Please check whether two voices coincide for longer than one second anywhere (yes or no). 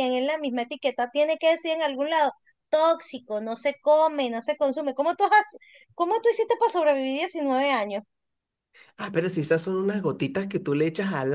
no